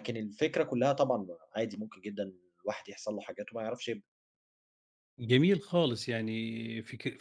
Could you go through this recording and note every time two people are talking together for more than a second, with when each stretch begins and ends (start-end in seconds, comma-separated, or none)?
none